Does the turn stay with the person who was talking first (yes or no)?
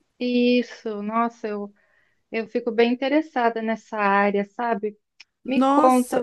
yes